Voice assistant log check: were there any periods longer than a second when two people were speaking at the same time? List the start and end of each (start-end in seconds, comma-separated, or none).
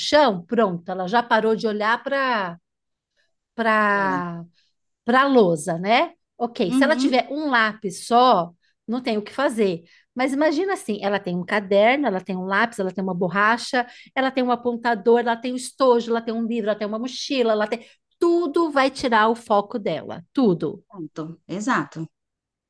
none